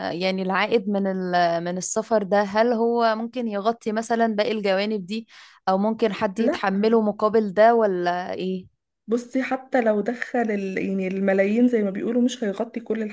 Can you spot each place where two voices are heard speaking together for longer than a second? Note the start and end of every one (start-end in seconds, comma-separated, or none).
none